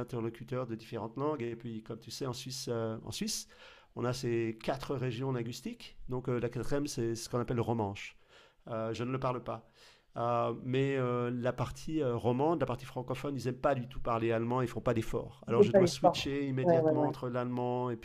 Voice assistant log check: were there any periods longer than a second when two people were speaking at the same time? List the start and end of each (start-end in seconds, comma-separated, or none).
15.5-17.1